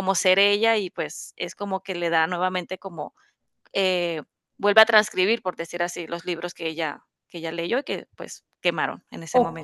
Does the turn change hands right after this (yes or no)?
yes